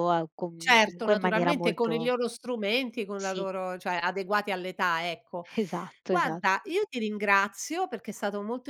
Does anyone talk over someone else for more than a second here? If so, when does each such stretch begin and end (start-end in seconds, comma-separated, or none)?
0.6-2.1